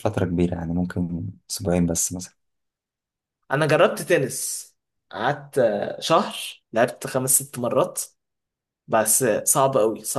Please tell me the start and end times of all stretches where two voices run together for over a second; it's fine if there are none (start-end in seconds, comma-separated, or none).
none